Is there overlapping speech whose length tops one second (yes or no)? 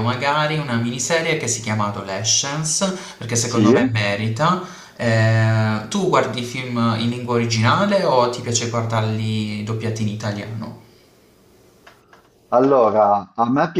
no